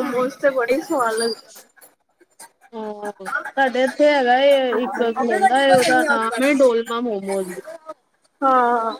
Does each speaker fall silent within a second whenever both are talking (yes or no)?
no